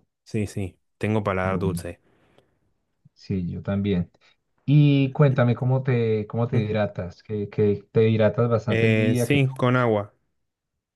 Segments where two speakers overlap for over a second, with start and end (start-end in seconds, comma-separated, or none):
8.7-9.9